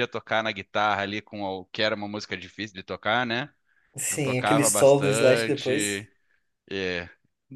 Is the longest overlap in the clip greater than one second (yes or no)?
yes